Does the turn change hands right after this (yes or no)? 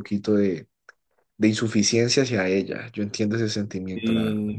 yes